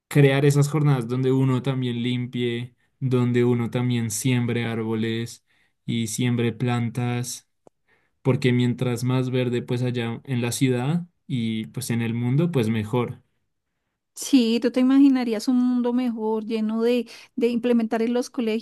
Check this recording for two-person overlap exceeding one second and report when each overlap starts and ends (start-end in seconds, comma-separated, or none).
none